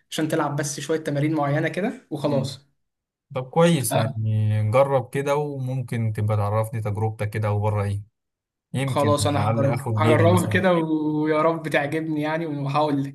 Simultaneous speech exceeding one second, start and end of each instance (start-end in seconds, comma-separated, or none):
8.9-10.6